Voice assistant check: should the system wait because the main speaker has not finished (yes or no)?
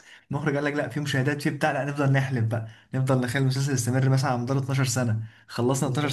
yes